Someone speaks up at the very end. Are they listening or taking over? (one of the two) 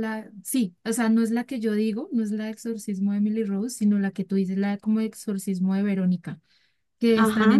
listening